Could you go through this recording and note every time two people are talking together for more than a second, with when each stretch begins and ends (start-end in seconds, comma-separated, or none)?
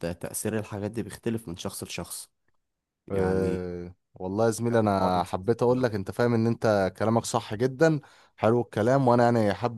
4.7-6.1